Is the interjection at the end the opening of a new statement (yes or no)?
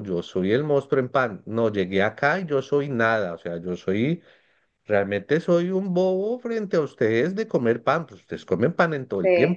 yes